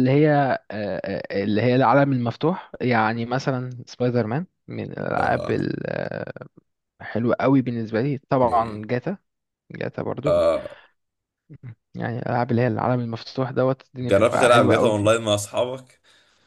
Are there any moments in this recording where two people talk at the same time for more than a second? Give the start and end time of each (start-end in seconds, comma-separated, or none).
14.0-15.3